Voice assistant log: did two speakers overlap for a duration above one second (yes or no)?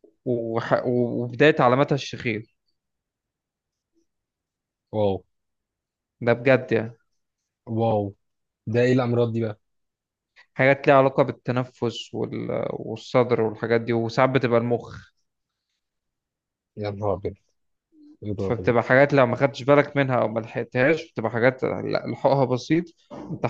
no